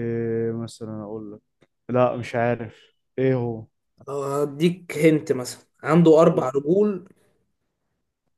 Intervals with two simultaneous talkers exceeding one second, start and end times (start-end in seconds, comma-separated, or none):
none